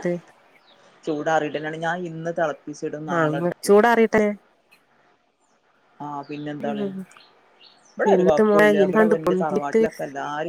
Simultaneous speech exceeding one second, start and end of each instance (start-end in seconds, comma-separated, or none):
8.2-9.8